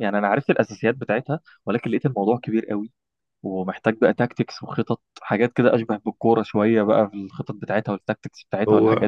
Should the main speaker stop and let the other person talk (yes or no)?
yes